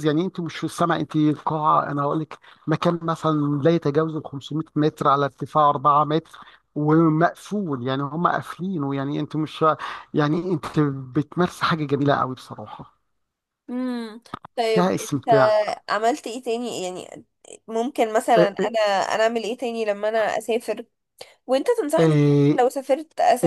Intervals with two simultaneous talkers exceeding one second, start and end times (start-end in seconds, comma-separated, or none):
none